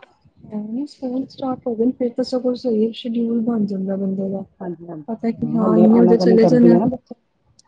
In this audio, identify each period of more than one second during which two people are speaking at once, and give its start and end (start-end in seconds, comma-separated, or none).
5.1-6.8